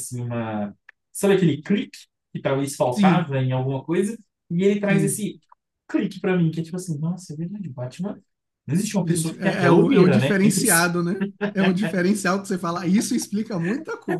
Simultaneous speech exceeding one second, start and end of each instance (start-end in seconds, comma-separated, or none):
9.0-10.9